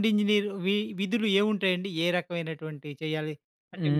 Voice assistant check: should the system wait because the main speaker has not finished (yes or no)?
no